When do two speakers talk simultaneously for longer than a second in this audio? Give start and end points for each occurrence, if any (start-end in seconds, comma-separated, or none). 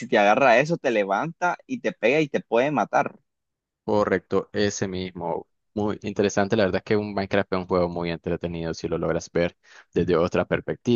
none